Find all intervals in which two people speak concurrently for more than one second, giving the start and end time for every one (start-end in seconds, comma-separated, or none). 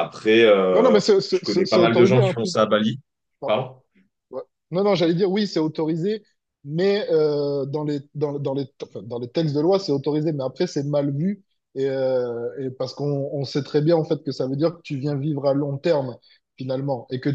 0.7-2.5